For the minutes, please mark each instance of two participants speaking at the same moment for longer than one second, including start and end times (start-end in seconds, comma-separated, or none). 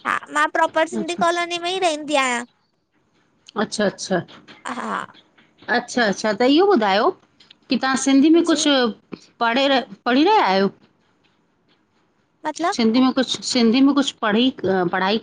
none